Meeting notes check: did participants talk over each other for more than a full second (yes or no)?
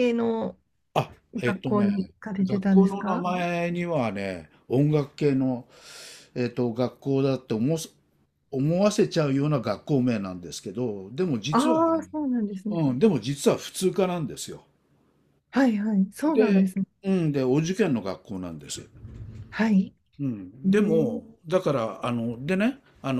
yes